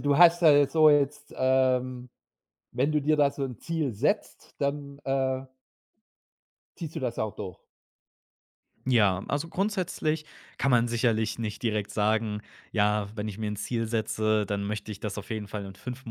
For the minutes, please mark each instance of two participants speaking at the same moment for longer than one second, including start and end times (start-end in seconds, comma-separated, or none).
none